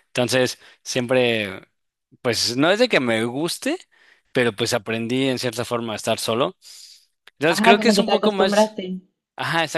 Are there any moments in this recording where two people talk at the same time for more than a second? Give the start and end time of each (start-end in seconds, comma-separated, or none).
7.5-8.8